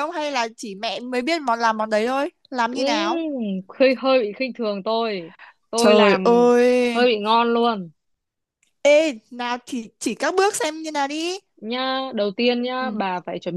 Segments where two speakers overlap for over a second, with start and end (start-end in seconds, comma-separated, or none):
none